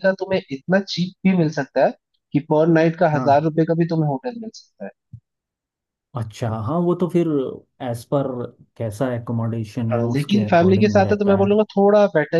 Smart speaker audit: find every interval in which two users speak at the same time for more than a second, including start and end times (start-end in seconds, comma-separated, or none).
9.9-11.5